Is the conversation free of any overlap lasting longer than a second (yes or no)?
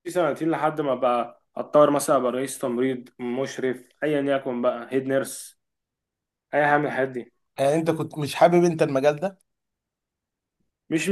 yes